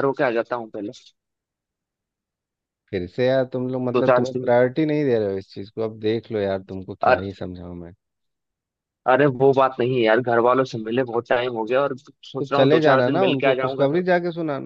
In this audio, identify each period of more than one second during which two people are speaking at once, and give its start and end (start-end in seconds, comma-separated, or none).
12.4-14.1